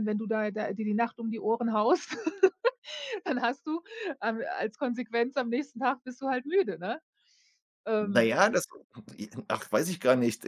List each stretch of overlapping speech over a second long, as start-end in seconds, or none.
none